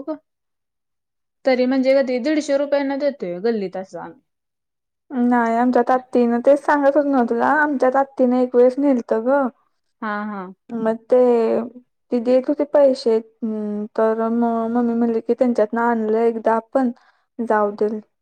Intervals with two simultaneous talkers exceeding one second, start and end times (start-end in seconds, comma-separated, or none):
none